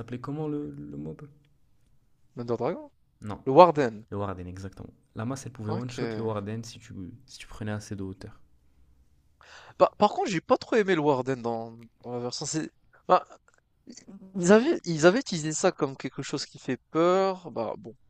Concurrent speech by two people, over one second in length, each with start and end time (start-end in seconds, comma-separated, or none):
none